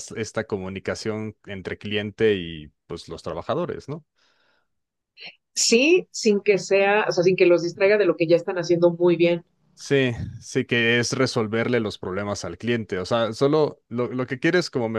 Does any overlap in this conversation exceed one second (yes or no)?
no